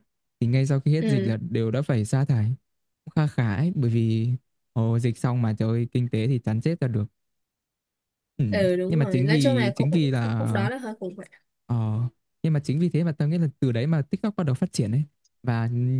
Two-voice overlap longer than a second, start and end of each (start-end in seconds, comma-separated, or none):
8.5-10.4